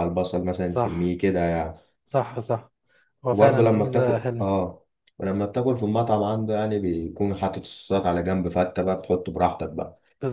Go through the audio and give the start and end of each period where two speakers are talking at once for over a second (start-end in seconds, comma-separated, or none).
3.3-4.5